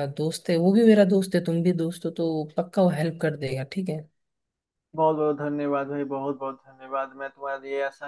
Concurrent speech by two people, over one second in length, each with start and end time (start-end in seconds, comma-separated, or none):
none